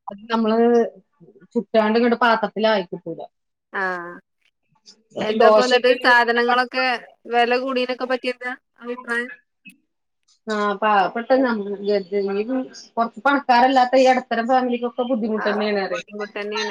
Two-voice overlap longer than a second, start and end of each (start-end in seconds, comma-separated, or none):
5.4-6.6